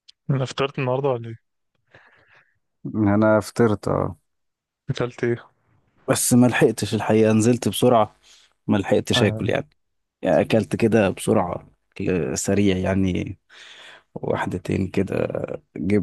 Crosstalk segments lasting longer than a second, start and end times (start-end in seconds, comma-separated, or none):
none